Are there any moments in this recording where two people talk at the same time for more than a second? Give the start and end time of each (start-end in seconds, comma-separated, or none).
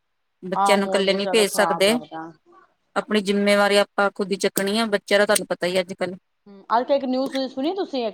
0.6-1.9